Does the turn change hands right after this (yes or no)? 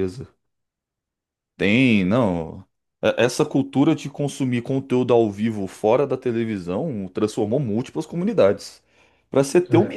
no